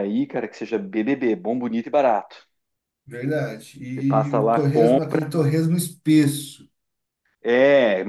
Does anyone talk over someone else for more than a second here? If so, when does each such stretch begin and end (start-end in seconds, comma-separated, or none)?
3.9-5.3